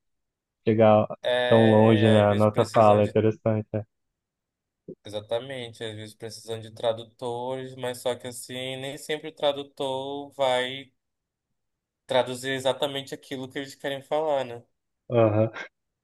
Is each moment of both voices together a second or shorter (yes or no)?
no